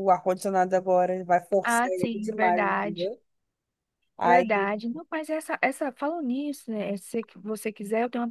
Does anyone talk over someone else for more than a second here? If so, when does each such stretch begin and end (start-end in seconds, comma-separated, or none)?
1.6-3.1